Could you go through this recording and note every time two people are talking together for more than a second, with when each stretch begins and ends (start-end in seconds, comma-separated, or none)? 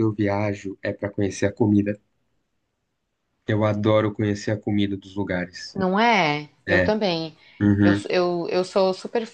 none